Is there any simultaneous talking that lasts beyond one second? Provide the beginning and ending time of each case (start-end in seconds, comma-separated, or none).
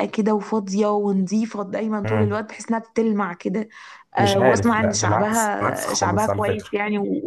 4.2-6.7